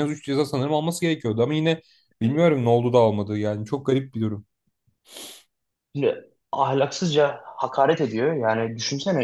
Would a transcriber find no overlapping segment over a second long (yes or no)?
yes